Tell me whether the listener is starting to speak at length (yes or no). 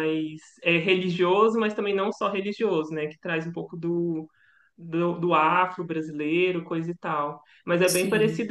no